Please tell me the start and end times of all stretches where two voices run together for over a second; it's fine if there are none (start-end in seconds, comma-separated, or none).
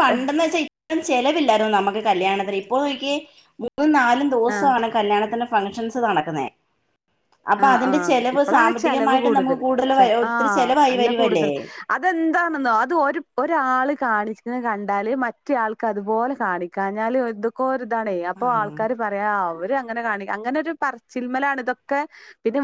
7.6-11.5